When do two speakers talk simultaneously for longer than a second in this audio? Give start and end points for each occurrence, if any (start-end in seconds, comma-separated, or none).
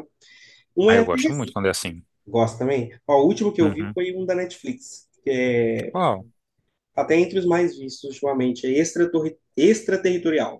none